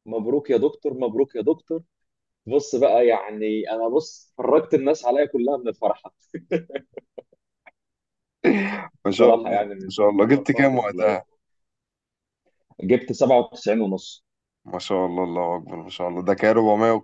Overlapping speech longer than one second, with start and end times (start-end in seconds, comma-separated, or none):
9.1-11.2